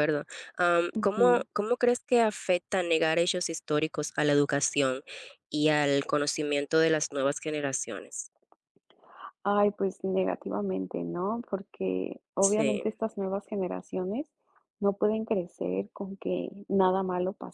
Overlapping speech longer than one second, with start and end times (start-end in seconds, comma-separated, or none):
none